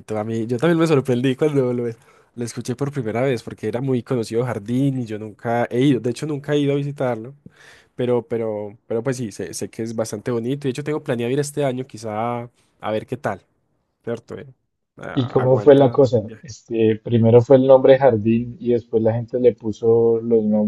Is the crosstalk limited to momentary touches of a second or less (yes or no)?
no